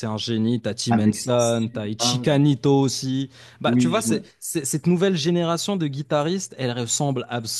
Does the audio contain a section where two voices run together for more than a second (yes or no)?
yes